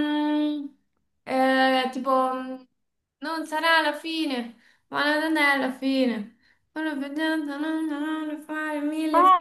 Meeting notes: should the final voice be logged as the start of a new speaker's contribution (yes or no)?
yes